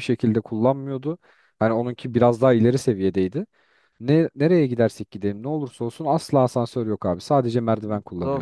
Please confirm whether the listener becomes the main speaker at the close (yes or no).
yes